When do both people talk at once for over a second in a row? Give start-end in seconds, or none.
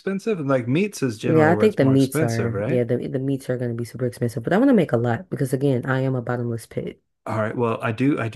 1.2-2.8